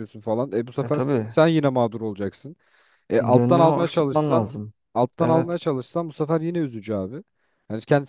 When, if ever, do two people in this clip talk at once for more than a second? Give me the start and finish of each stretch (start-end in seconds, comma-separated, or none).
3.2-4.5